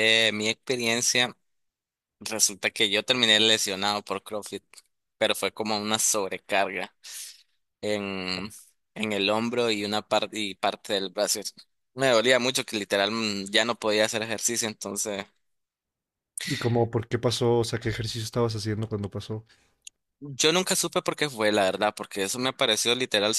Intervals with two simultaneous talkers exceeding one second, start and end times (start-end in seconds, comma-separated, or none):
none